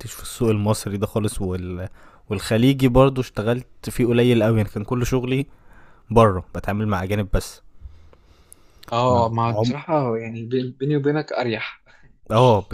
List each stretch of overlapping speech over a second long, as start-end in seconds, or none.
none